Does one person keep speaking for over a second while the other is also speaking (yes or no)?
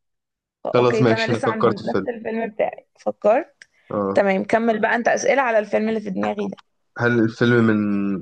yes